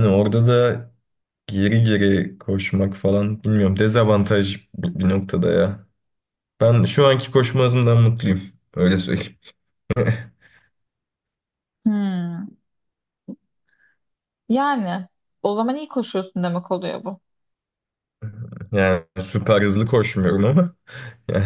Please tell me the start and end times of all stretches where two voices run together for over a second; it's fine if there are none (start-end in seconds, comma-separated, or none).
none